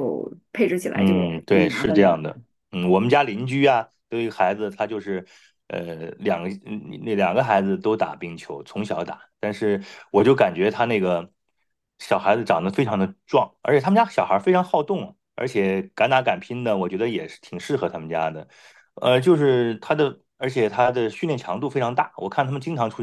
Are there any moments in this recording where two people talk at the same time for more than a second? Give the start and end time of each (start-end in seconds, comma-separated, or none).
0.9-2.2